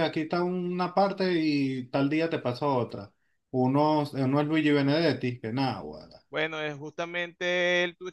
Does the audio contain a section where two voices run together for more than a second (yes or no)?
no